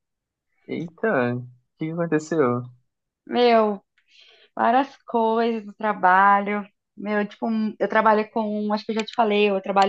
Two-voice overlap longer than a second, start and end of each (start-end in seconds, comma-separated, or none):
none